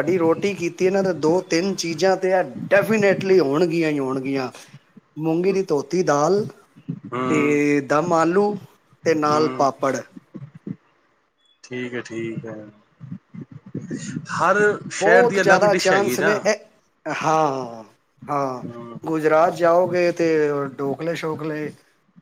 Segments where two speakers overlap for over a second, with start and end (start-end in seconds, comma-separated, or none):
15.0-16.3